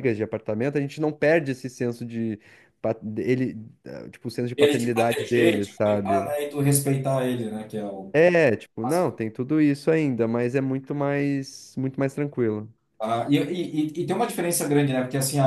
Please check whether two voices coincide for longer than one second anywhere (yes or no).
yes